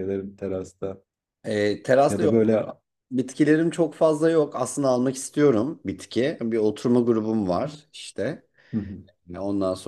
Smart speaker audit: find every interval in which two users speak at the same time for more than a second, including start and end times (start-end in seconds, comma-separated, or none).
none